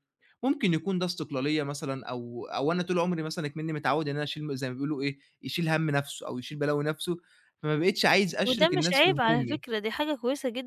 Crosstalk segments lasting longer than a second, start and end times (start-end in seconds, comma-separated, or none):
8.4-9.6